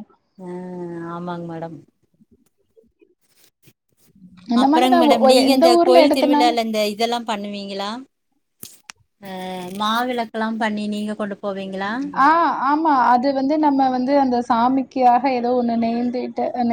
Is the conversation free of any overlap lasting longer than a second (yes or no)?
no